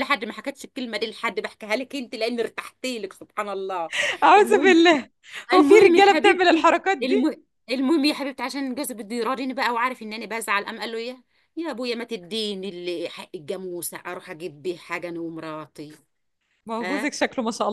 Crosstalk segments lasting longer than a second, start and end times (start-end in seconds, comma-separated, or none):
5.5-7.3